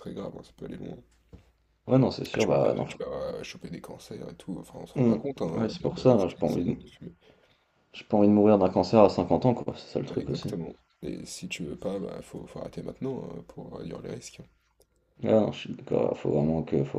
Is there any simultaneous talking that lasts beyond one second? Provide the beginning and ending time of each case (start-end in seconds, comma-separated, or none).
5.0-6.8